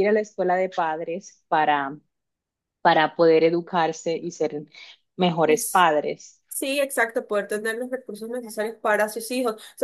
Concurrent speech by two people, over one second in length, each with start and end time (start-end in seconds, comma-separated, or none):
none